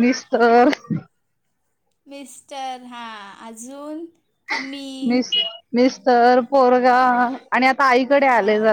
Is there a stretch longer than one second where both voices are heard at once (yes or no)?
no